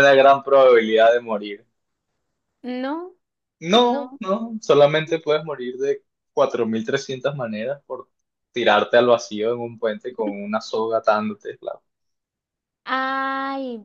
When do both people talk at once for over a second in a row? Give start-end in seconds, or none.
none